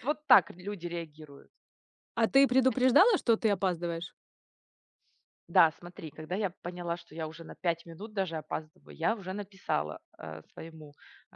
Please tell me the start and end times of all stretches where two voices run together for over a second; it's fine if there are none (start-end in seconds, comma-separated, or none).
none